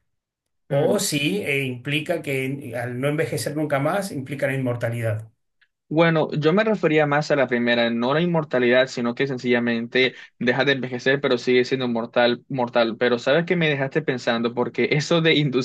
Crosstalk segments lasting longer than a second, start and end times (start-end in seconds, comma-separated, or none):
none